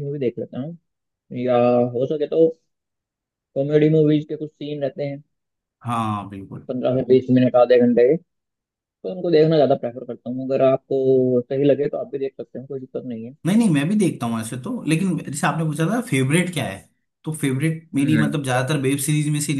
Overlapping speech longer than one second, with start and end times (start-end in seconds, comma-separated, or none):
none